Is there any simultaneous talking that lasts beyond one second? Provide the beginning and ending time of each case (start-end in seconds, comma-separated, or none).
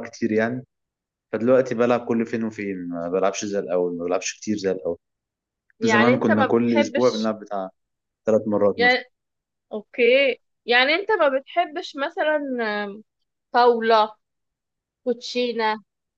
5.8-7.3